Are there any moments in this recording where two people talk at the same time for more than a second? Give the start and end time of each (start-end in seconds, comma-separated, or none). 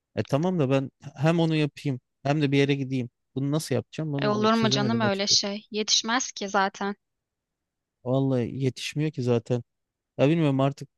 4.2-5.4